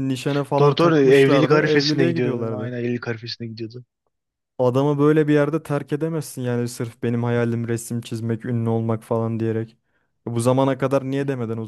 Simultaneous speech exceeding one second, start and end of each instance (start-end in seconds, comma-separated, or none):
0.6-2.7